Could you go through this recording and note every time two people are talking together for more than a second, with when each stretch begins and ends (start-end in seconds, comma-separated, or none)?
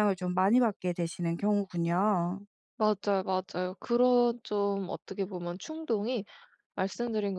none